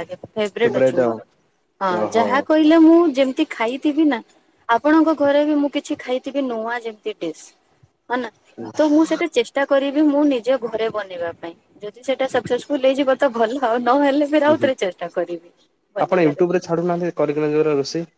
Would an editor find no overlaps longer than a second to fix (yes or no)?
yes